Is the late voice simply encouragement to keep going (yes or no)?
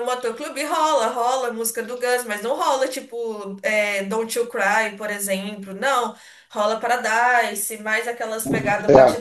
yes